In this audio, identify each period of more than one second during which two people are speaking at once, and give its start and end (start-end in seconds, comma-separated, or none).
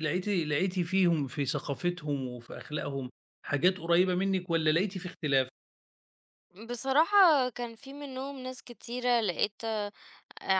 none